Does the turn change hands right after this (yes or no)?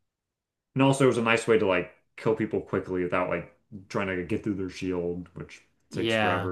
yes